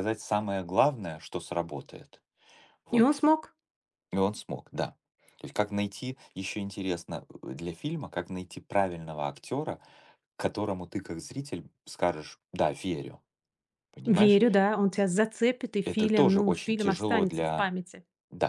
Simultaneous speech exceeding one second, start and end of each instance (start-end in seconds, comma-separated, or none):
15.8-17.7